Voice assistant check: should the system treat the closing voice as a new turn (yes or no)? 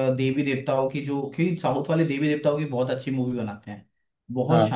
no